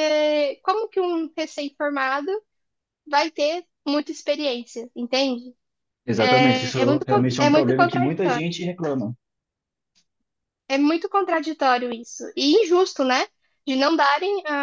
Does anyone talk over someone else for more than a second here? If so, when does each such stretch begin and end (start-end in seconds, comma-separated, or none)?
6.2-8.4